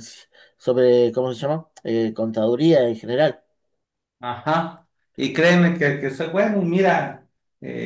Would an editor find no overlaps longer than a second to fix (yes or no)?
yes